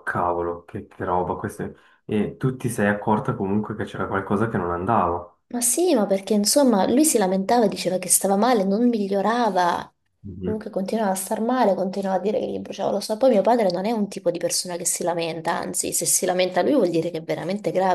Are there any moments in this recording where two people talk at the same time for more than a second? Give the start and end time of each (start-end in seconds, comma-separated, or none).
none